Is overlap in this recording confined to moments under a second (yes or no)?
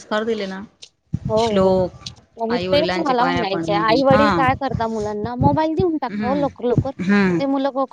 no